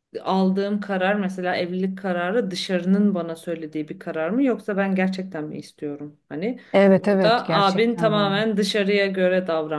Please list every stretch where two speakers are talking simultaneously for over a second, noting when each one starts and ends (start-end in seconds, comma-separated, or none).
7.0-8.3